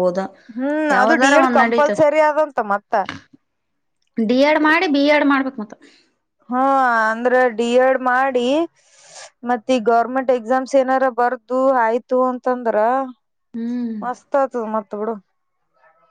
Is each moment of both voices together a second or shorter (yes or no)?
yes